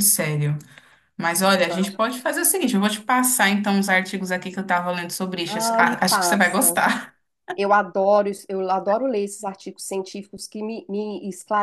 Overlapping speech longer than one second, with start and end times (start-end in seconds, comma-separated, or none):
5.5-6.8